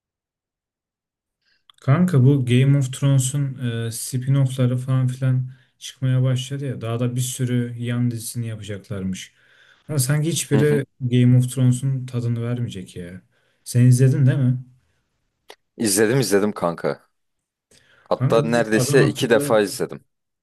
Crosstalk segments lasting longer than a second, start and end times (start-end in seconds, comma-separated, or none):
18.2-19.6